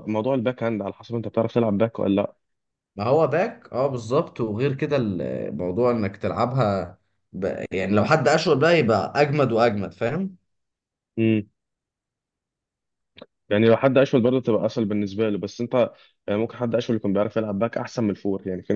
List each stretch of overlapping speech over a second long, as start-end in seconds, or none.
none